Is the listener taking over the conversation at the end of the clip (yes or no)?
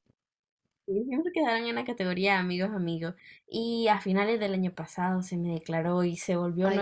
no